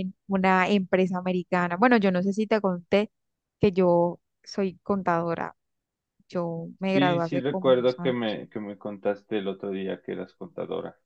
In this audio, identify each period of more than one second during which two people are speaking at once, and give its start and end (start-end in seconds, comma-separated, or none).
6.9-8.4